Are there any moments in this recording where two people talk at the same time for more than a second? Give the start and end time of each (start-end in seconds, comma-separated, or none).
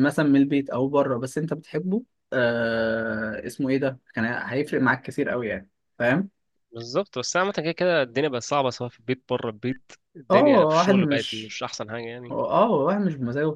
10.3-11.6